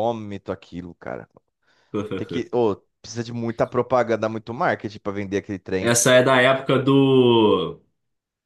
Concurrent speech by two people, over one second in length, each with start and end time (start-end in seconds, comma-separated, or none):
none